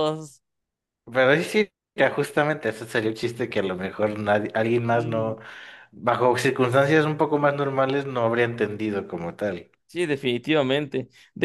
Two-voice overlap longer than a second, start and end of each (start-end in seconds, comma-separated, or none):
none